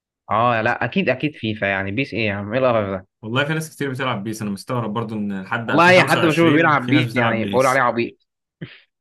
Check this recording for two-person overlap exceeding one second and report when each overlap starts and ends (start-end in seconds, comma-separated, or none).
5.7-7.8